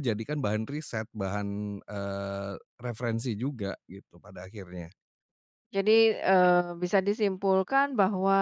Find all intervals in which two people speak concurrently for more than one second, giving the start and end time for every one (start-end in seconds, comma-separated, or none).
none